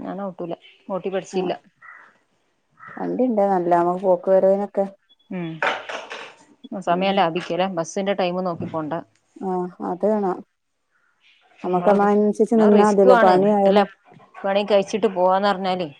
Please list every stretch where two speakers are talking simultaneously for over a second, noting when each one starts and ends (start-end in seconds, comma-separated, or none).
11.6-13.8